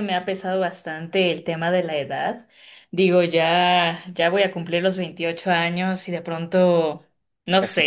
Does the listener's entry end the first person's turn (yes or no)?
no